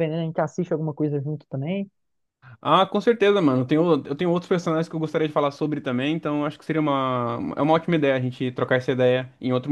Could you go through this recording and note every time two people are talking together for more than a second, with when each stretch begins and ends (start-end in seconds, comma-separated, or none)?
none